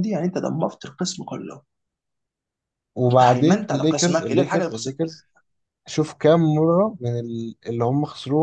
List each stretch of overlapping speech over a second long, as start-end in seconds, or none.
3.1-5.0